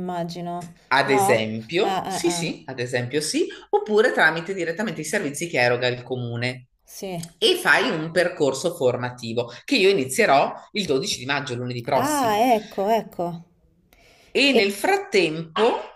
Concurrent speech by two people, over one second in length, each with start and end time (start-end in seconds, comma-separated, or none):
0.9-2.6